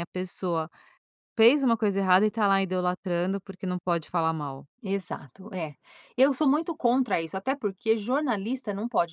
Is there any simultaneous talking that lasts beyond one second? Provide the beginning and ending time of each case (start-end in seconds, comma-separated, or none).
none